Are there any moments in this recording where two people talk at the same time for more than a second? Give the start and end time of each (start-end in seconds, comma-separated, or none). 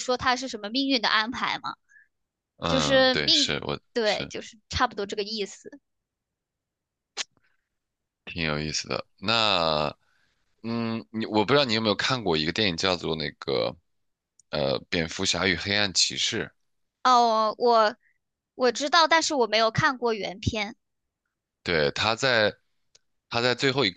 2.7-4.3